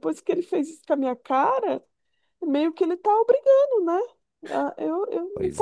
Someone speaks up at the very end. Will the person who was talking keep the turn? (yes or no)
yes